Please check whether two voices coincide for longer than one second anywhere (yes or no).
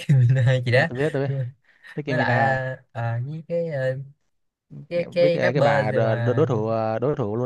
yes